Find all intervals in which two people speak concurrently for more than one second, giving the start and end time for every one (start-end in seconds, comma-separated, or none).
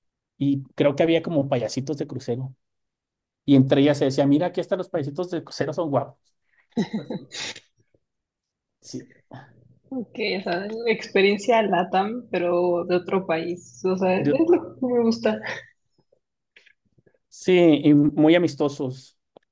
none